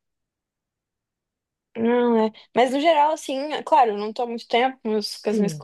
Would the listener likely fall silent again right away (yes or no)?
yes